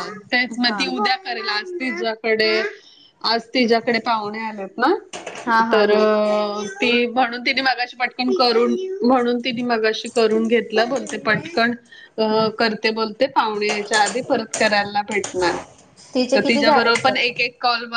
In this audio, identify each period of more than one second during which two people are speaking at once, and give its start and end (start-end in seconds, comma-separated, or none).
16.1-17.4